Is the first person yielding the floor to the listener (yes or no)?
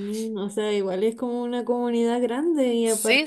no